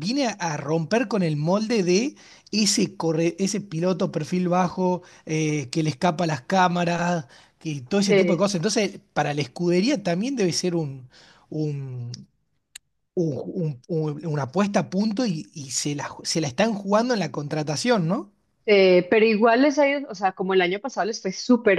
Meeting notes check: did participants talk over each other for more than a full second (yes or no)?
no